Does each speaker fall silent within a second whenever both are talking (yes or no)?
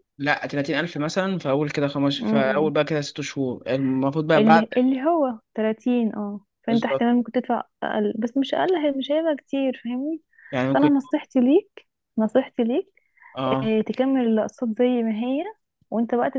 yes